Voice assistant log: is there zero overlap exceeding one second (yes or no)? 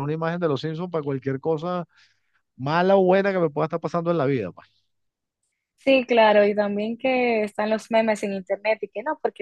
yes